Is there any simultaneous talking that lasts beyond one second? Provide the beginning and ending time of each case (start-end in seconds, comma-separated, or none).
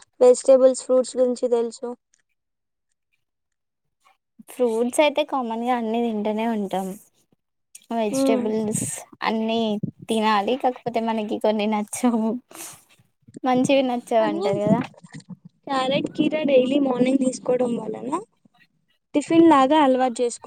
none